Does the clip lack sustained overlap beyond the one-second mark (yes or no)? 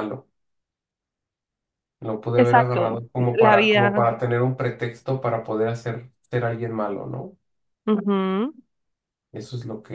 no